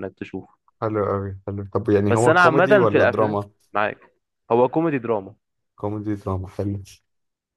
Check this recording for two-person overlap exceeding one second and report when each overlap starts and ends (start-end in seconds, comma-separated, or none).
2.1-3.5